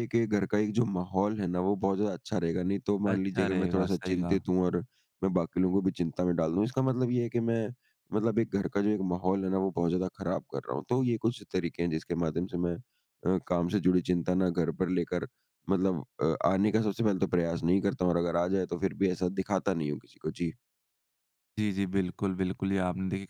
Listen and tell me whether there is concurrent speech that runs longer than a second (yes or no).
yes